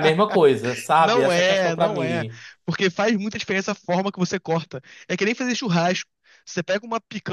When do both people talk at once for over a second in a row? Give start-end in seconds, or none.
1.0-2.2